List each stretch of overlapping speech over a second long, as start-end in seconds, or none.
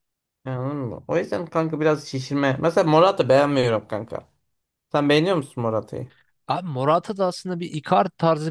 none